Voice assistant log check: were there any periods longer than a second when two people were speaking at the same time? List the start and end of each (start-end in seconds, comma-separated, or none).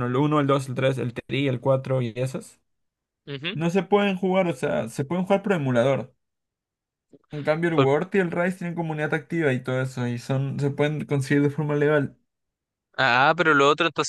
none